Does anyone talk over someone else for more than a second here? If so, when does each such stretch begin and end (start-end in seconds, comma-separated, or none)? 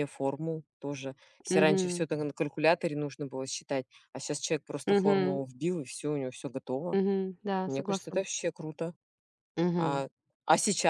none